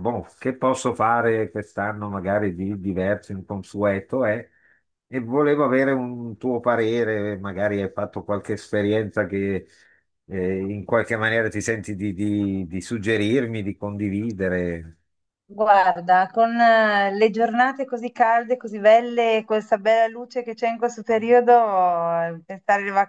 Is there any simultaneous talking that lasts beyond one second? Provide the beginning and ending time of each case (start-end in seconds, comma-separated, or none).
none